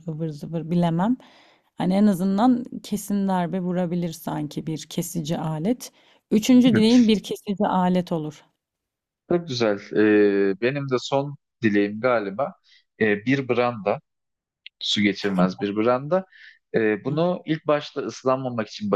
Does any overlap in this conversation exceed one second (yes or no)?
no